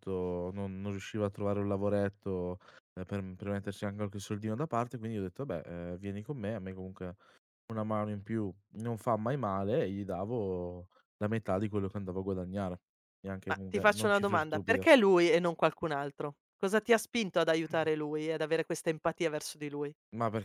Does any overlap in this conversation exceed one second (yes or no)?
yes